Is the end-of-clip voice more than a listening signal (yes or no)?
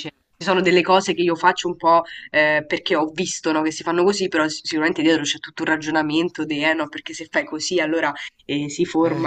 no